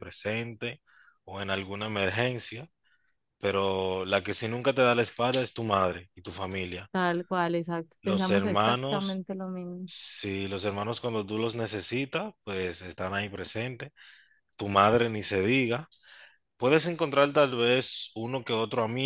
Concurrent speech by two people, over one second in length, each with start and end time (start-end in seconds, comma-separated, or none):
8.0-9.2